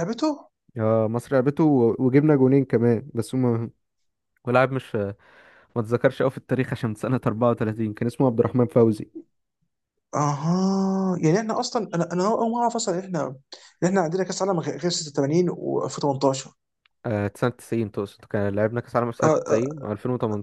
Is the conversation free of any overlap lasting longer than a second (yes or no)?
yes